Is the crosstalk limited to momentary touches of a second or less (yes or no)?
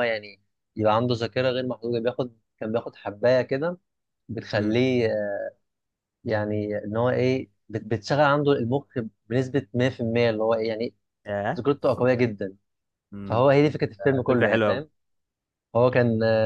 yes